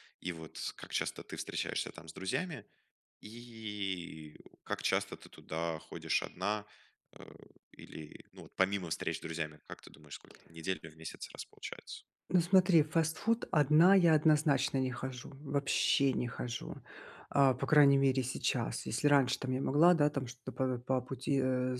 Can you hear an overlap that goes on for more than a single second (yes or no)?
no